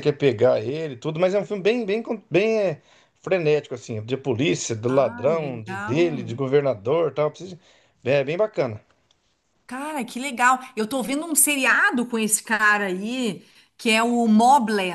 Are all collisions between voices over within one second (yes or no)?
no